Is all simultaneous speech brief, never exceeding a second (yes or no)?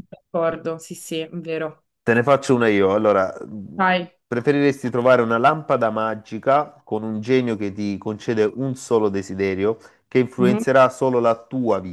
yes